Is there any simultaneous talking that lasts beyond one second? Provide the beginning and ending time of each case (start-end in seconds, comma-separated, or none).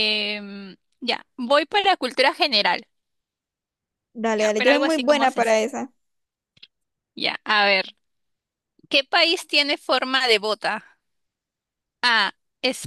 4.3-5.6